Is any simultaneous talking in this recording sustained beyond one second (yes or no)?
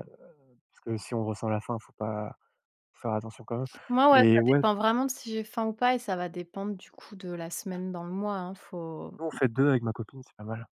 no